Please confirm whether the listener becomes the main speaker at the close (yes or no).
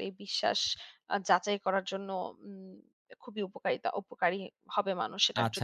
yes